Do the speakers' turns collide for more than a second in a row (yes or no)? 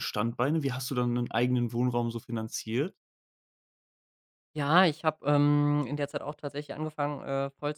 no